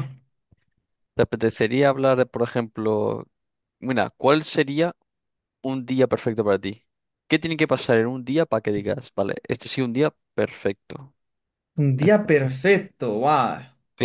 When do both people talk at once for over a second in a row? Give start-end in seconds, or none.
none